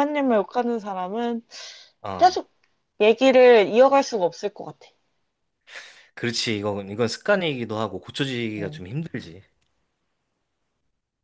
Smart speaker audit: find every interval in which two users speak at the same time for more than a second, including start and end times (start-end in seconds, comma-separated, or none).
none